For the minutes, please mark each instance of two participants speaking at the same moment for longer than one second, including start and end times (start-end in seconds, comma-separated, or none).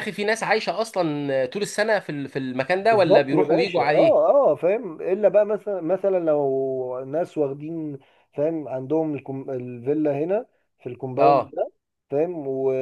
2.8-4.2